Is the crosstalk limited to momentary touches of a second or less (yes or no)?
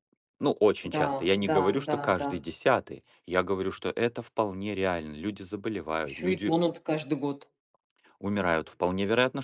no